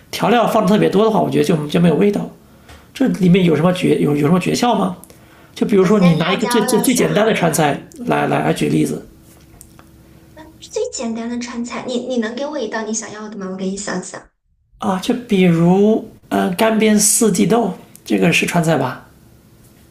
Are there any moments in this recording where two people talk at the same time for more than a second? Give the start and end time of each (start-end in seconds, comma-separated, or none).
5.8-7.1